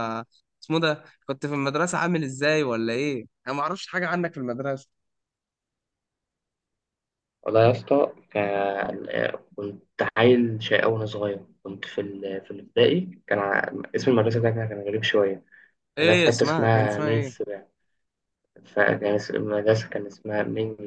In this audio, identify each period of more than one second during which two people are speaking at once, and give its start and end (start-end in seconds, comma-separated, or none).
16.0-17.4